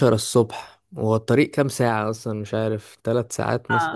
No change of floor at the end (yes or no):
no